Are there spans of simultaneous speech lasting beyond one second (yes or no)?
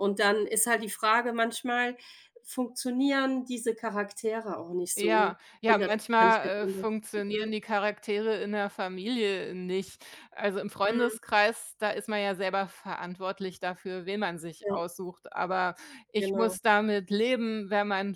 yes